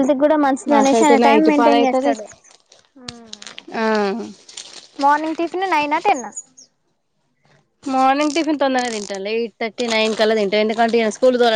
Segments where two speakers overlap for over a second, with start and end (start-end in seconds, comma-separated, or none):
0.7-2.1